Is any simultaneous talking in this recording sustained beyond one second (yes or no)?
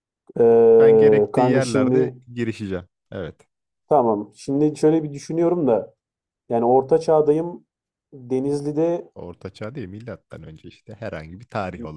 yes